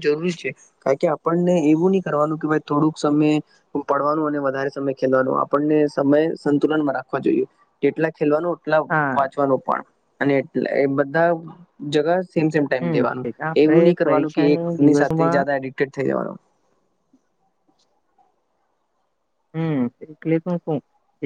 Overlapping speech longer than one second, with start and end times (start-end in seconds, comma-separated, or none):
13.6-15.4